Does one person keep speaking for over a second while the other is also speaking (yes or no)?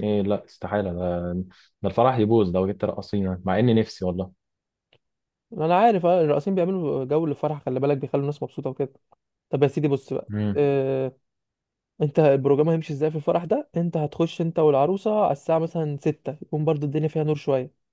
no